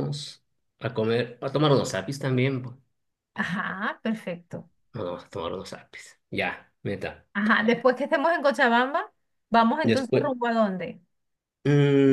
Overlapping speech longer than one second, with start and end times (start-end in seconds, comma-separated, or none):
none